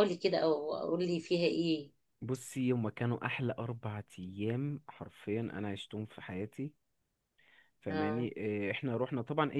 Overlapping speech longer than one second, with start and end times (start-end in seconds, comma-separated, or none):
none